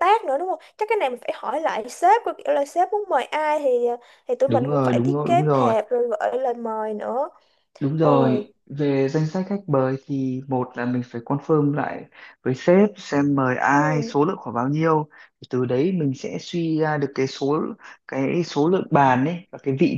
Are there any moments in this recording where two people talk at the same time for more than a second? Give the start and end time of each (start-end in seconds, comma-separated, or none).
4.5-5.8